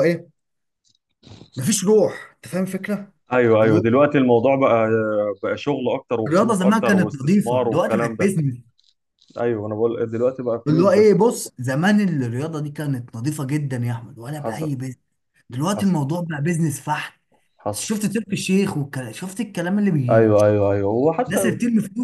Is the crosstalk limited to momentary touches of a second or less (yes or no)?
no